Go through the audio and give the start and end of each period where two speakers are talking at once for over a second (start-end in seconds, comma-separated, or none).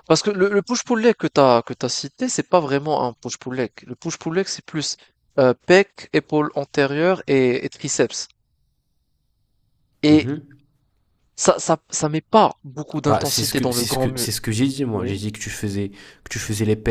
13.1-14.3